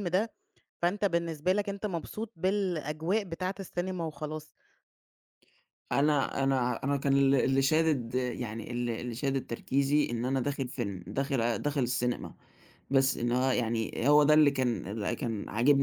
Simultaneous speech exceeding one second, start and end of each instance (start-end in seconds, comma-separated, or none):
none